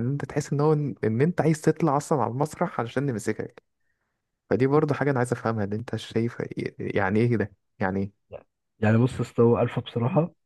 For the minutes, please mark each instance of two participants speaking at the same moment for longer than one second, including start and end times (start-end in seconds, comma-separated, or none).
none